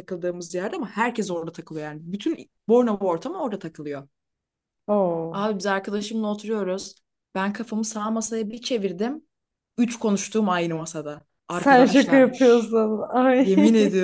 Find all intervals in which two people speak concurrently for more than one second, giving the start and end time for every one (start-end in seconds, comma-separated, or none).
11.5-12.7